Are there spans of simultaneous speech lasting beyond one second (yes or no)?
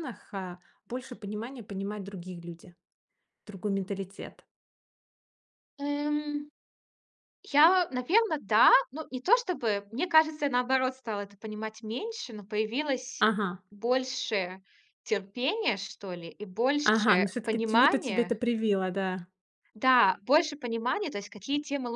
yes